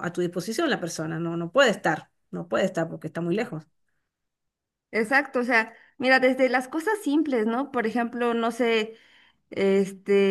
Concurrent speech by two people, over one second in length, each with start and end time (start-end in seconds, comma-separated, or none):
none